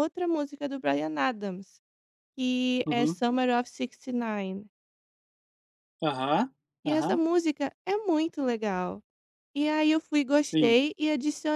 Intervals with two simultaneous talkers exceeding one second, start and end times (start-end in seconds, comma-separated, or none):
none